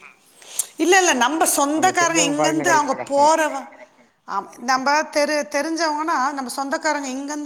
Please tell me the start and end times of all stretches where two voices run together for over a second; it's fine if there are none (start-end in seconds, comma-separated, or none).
1.8-3.3